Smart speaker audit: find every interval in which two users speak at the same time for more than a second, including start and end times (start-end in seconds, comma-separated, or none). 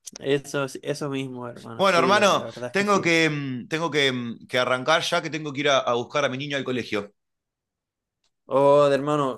1.8-3.1